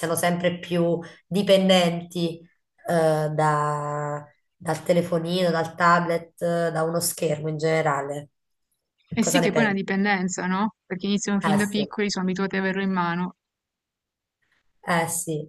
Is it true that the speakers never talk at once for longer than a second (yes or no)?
yes